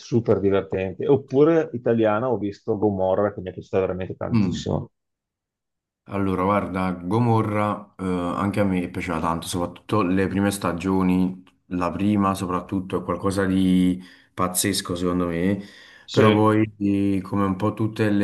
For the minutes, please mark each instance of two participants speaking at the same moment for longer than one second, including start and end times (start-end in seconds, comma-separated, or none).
none